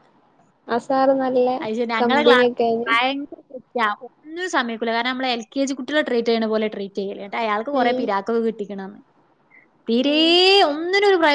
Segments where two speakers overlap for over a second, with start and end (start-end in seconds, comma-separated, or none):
none